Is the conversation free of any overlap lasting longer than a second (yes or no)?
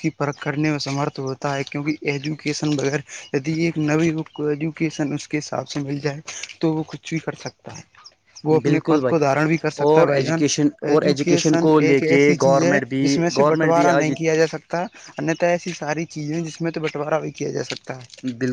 no